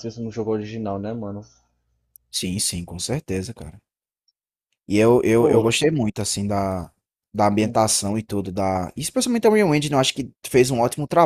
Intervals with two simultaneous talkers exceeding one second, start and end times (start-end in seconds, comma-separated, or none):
none